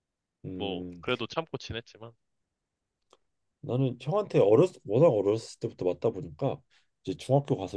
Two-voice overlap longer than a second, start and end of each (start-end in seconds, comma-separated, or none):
none